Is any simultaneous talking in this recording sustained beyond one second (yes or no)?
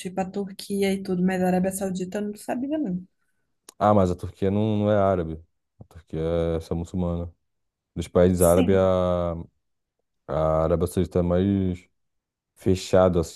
no